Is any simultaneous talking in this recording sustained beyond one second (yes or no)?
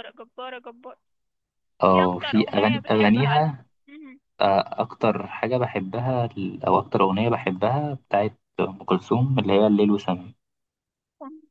yes